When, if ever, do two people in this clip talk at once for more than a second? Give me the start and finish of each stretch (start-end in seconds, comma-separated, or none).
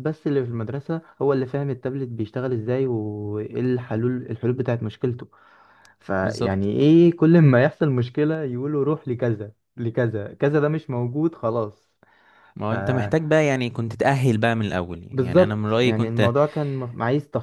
15.1-16.4